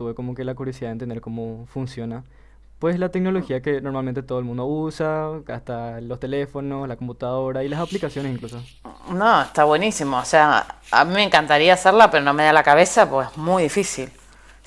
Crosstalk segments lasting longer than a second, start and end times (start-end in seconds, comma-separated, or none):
none